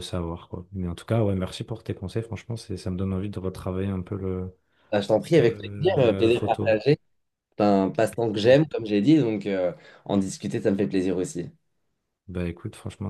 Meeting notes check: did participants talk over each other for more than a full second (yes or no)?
yes